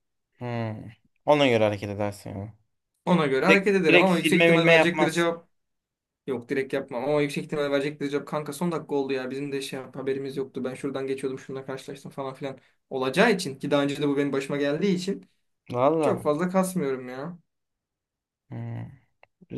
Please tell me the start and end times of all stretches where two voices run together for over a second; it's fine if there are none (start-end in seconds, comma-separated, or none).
3.5-5.3